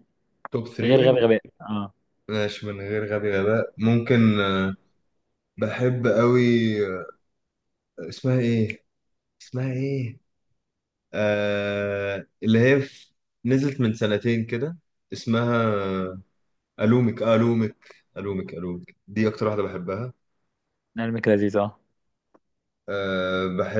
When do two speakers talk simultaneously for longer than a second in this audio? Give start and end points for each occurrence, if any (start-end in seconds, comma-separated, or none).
none